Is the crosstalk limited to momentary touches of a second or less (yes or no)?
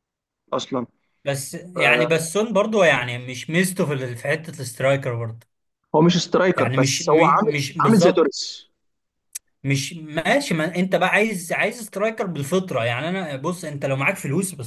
no